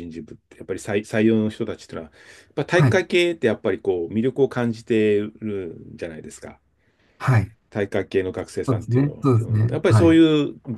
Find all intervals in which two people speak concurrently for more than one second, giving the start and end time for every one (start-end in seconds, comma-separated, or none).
8.7-10.2